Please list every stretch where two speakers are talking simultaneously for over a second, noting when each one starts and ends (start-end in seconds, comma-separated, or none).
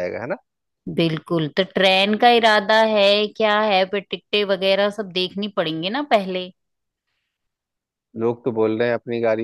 none